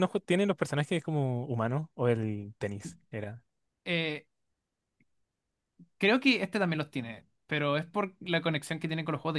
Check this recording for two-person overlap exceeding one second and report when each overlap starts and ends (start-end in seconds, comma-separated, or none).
none